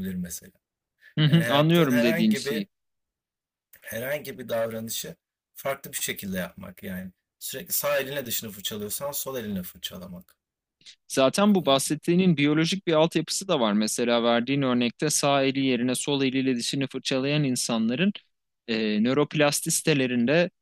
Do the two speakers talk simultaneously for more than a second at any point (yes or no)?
yes